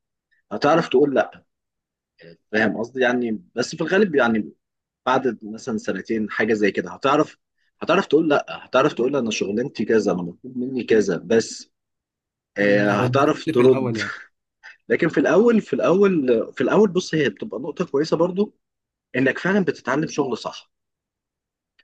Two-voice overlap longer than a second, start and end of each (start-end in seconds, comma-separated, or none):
12.6-14.0